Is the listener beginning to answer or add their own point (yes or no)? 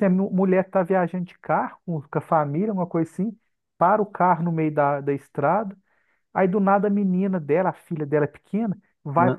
no